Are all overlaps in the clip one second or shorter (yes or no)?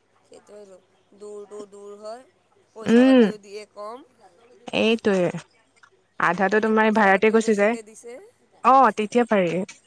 no